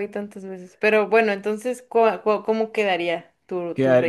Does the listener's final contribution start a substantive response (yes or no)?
yes